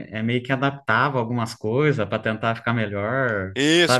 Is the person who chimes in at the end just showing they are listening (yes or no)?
no